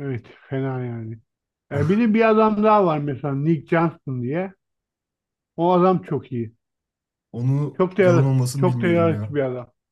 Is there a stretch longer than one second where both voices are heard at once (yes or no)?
yes